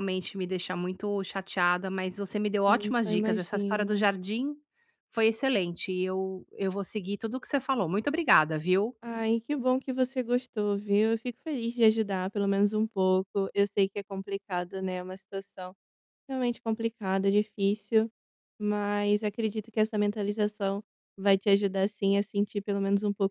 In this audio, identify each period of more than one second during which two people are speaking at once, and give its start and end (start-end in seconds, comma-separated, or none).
2.7-4.1